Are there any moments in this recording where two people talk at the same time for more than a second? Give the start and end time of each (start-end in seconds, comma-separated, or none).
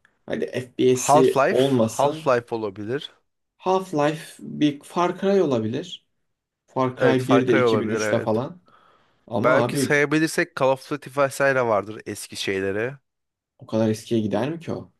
1.0-2.3, 7.0-8.4